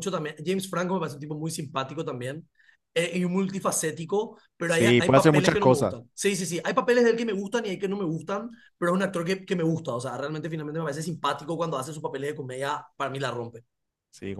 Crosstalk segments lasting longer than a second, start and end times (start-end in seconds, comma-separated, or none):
4.6-6.0